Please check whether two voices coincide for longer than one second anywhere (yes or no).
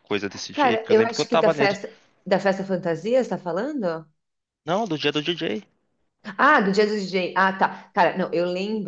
yes